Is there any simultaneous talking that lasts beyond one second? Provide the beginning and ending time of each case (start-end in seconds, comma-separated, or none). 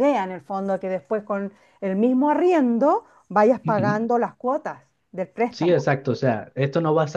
none